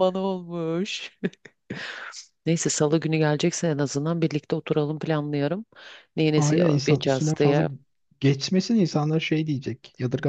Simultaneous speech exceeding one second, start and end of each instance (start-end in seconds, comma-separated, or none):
6.4-7.6